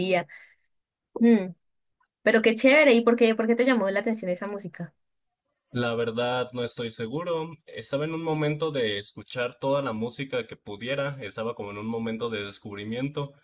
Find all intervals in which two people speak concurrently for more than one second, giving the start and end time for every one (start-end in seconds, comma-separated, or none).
none